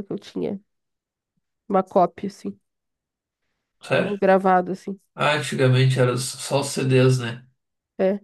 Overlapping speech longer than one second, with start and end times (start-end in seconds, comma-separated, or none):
none